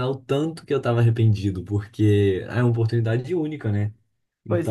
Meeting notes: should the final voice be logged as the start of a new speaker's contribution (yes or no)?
yes